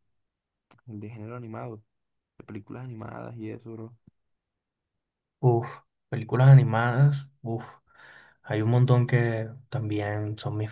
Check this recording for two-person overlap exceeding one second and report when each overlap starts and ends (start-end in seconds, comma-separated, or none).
none